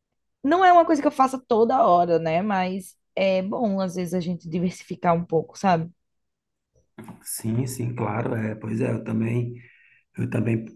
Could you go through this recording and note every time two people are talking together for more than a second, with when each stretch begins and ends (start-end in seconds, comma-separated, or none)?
none